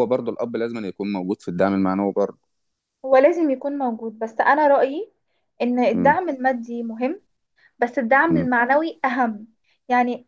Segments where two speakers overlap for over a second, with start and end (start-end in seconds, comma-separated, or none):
none